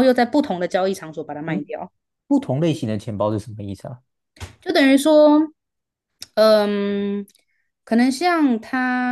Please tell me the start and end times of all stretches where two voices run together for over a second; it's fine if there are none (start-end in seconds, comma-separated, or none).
none